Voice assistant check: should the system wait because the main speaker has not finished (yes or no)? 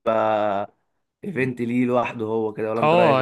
no